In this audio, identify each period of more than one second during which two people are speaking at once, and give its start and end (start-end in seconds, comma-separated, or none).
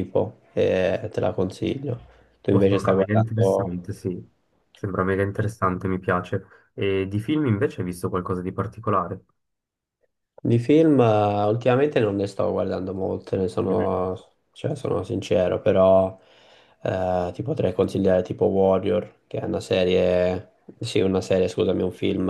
2.5-3.7